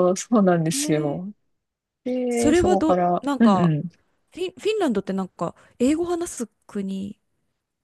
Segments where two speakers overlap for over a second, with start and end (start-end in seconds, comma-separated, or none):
2.3-3.7